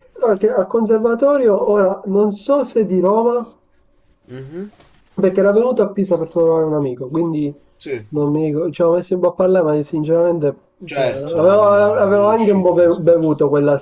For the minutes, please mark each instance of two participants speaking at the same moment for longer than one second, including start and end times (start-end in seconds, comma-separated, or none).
10.9-13.3